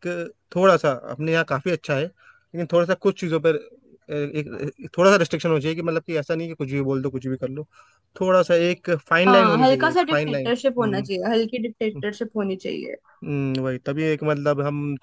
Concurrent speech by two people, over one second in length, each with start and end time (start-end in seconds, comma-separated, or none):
9.3-10.5